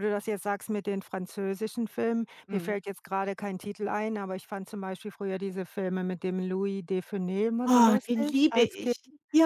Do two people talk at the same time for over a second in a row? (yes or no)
yes